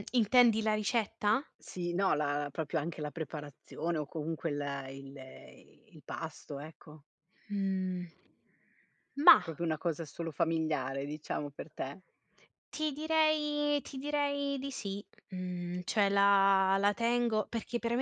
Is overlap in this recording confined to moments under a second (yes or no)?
yes